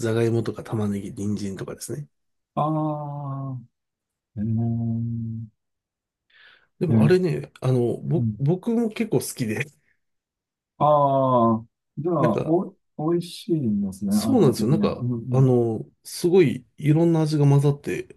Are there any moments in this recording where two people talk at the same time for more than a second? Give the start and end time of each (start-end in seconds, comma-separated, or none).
14.1-15.5